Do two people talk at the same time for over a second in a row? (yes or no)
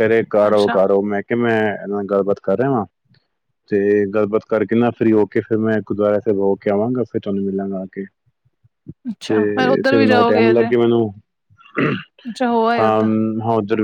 yes